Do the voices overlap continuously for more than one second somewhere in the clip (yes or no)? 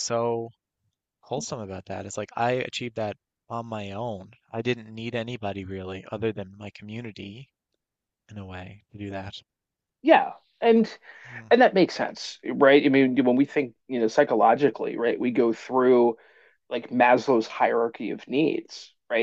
no